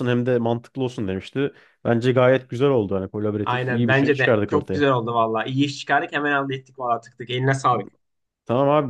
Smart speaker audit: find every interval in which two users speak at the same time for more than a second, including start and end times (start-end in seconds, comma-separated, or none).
3.4-4.8